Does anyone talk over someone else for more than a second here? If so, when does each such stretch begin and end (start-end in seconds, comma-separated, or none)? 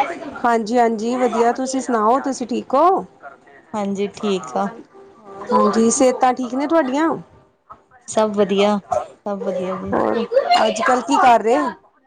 none